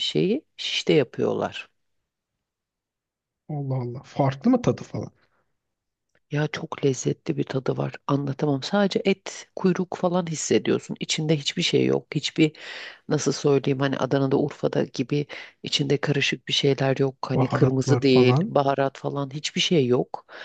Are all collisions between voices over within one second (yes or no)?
no